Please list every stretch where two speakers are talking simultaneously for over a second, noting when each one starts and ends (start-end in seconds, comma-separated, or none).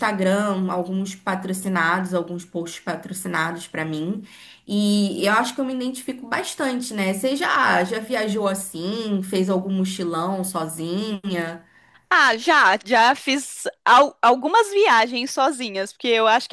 none